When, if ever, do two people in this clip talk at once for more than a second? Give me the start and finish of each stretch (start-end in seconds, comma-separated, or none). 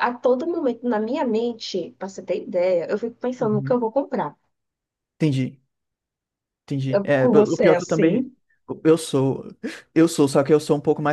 6.9-8.3